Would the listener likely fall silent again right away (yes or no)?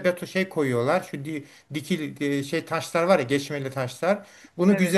yes